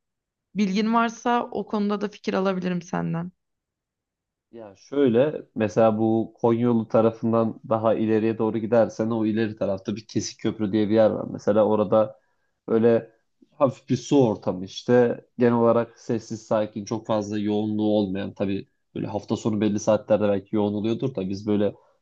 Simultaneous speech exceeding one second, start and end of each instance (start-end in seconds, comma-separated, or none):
none